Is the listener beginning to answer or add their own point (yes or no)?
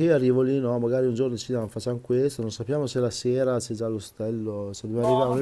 yes